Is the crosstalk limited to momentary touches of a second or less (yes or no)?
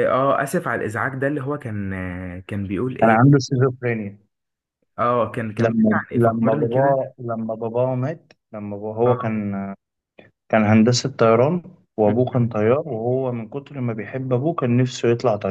no